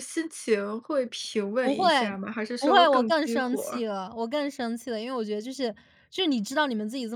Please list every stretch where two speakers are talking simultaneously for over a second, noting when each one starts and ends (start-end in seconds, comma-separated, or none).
2.6-3.8